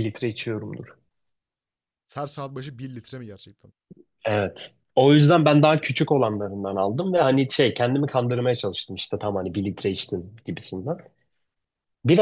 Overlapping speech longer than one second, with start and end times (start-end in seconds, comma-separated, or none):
none